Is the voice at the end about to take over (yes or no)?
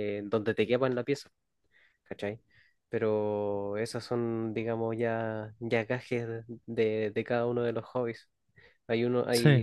no